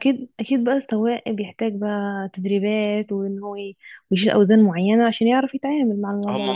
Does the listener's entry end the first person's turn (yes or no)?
yes